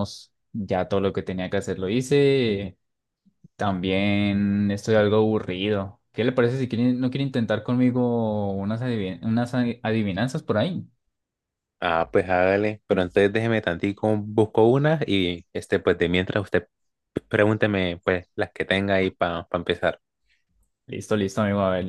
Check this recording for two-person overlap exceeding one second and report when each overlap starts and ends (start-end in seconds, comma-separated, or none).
none